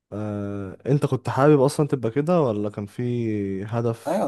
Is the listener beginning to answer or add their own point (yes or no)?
yes